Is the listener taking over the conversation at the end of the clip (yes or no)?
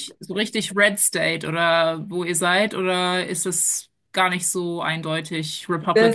yes